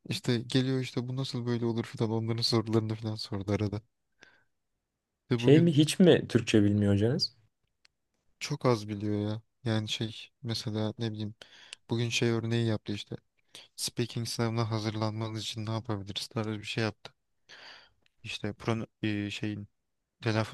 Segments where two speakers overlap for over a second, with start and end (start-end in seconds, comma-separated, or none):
none